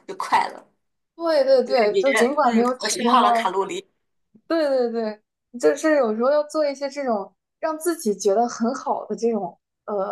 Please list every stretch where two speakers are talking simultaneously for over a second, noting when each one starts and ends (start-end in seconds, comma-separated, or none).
1.9-3.5